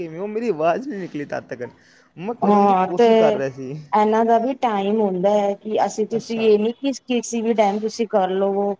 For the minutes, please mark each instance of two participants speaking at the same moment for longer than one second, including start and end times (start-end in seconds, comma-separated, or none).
none